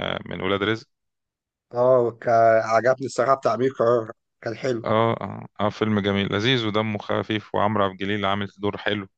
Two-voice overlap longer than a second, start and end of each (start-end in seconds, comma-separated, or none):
none